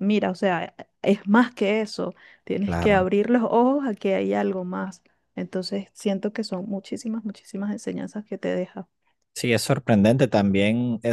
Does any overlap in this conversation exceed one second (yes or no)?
no